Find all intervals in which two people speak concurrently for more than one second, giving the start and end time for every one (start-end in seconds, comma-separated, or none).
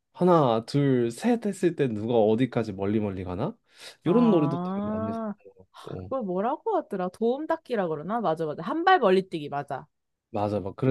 4.0-5.3